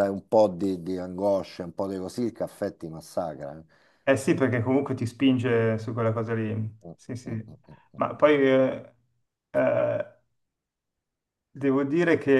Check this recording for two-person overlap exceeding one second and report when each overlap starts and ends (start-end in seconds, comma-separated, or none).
none